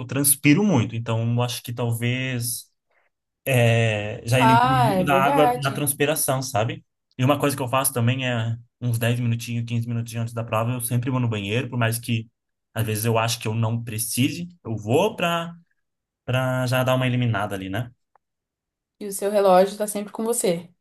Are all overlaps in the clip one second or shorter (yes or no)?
no